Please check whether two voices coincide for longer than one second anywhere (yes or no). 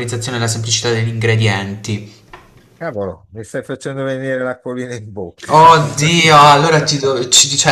no